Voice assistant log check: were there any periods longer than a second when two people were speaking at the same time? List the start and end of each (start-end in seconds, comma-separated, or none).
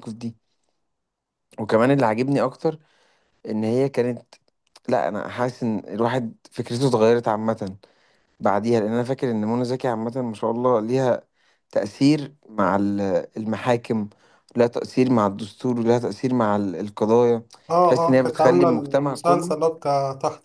17.8-19.6